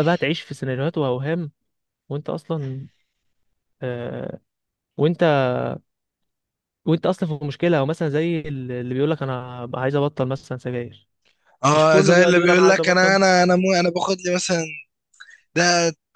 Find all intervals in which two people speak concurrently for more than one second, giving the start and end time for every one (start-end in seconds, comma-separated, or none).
11.7-13.2